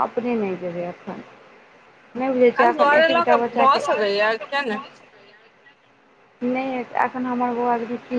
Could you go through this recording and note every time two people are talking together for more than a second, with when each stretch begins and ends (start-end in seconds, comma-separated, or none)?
2.6-4.8